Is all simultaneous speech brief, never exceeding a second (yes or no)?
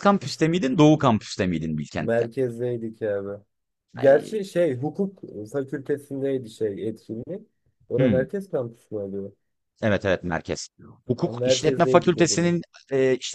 no